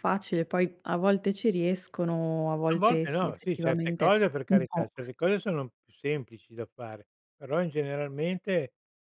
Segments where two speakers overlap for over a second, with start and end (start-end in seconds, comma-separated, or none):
2.7-4.9